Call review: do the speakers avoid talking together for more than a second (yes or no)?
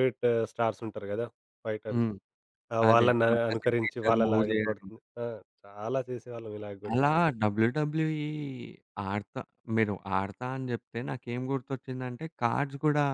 no